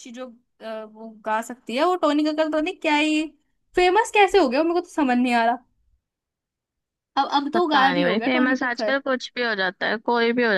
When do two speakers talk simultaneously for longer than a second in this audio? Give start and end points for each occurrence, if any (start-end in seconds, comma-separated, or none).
7.5-8.9